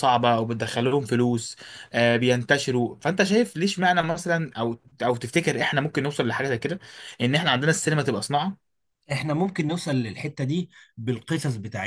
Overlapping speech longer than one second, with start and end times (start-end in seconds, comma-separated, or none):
none